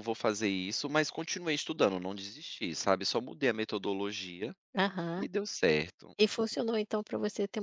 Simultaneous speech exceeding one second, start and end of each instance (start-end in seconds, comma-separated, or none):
none